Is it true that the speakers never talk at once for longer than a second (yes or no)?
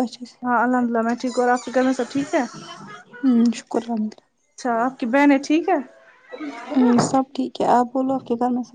yes